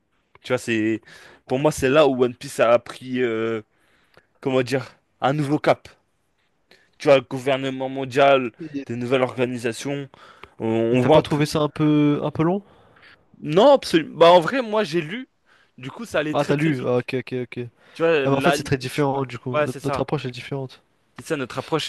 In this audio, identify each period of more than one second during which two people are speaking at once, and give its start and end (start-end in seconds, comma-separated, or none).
18.2-20.1